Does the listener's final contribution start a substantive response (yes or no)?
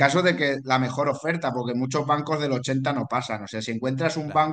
no